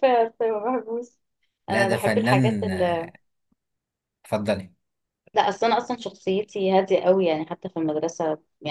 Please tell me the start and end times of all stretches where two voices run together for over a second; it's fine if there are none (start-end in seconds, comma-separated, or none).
1.7-3.1